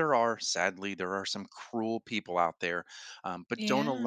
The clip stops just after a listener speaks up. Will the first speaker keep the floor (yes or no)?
yes